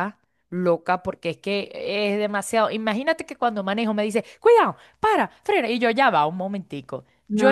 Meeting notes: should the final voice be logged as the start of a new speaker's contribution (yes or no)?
no